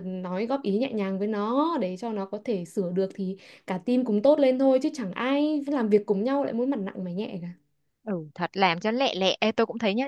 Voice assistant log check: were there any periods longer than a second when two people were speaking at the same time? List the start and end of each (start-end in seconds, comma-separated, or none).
none